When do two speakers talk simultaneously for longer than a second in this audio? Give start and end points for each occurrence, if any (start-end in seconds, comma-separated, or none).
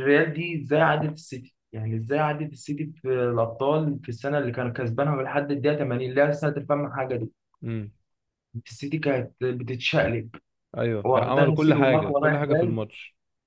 11.1-12.8